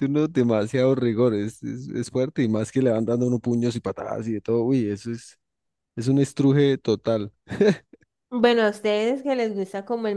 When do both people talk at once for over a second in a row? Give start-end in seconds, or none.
none